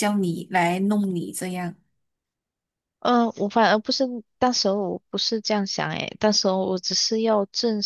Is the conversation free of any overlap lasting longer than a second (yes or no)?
yes